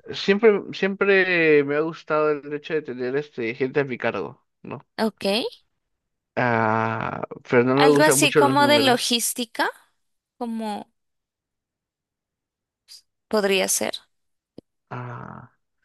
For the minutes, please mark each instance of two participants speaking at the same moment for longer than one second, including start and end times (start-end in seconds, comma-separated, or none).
7.8-9.2